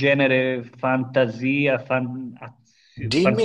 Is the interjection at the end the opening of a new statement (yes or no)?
yes